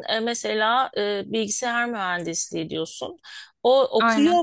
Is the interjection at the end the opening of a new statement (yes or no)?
no